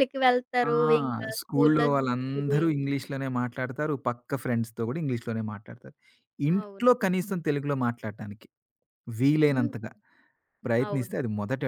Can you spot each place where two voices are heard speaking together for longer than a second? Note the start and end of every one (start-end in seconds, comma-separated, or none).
1.4-2.6